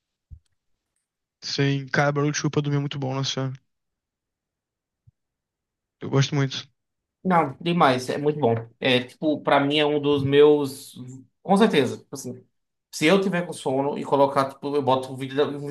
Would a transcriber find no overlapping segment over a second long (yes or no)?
yes